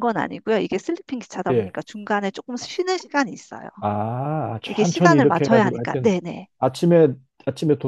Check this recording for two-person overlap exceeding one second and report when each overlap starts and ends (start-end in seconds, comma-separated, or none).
4.7-6.2